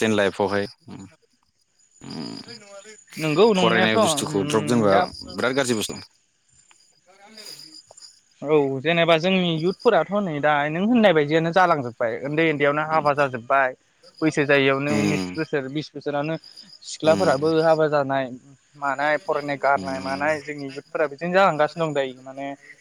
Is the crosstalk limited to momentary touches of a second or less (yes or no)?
no